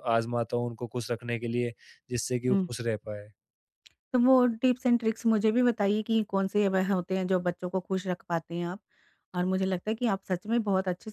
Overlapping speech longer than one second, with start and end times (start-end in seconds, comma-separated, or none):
none